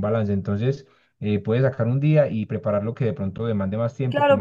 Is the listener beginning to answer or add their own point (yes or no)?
yes